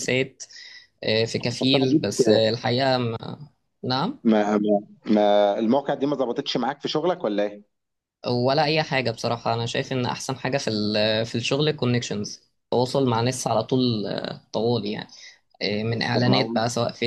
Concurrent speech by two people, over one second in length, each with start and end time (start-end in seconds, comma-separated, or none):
none